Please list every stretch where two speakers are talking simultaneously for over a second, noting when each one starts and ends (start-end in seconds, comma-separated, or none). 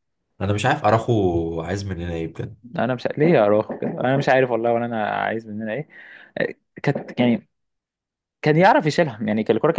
none